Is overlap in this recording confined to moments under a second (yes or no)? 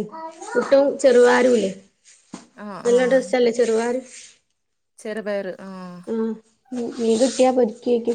yes